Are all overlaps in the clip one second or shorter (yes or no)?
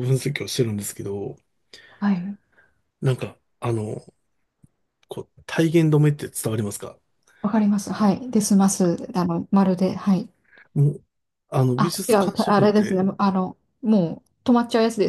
no